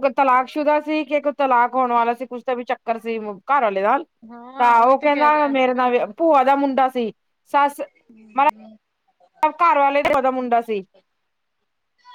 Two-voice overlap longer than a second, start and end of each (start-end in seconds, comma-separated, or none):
4.6-6.1